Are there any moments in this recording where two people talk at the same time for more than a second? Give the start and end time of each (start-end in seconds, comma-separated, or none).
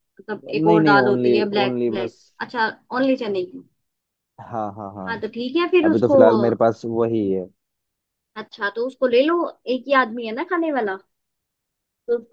0.7-2.2